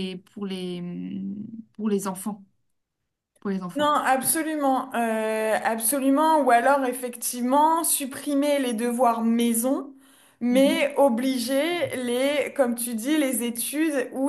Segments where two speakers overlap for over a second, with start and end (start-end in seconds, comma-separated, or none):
none